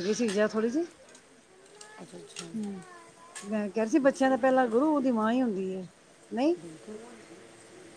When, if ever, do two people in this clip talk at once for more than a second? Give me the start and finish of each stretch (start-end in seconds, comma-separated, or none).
none